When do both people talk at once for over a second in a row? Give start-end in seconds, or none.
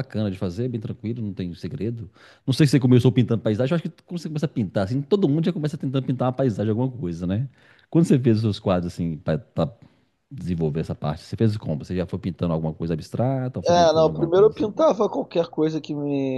13.6-14.9